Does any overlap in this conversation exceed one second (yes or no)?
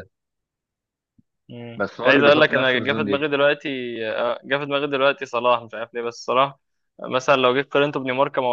yes